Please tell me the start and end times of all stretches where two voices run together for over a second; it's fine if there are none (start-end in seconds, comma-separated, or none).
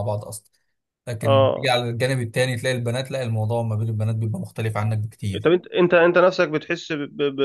none